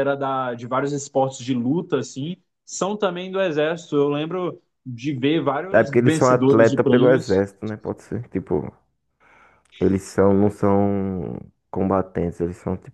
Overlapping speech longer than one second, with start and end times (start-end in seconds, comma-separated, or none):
5.7-7.4